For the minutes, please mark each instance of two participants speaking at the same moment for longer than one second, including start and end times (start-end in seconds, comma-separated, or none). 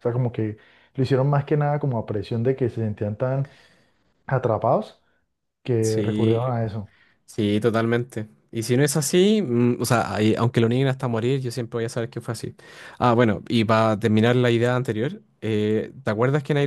none